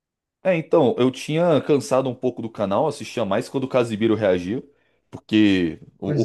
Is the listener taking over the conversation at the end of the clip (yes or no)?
no